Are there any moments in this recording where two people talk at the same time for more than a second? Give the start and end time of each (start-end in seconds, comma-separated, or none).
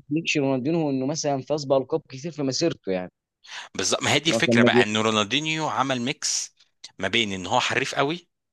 none